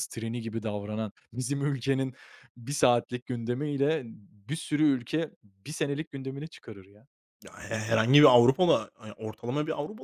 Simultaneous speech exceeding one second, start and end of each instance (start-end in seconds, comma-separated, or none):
none